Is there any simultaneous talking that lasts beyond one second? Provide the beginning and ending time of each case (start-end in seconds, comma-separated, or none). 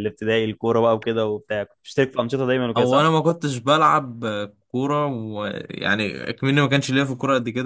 none